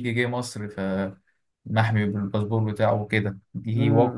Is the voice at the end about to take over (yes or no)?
yes